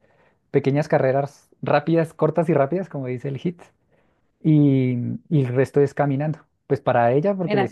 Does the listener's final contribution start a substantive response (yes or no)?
no